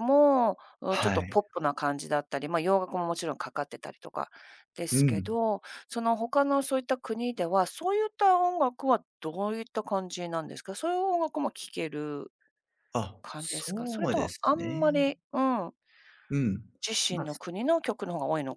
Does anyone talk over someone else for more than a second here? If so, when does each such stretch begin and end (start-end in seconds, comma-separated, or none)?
13.2-15.0